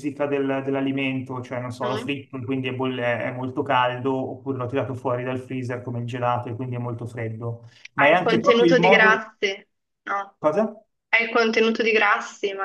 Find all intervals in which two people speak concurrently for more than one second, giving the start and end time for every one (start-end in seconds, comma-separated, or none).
8.0-9.2